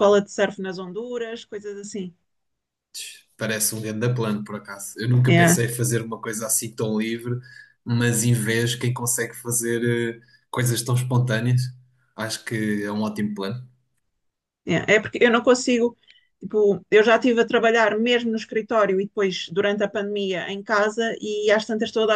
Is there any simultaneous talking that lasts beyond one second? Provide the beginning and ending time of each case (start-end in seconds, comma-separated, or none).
none